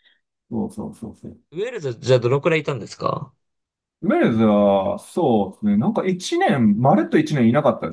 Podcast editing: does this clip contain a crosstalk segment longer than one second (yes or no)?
no